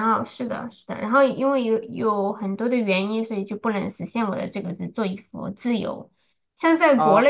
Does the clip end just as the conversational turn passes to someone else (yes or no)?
no